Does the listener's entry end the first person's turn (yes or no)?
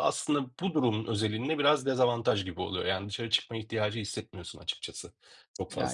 yes